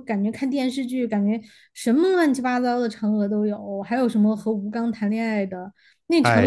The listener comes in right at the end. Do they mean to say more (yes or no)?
no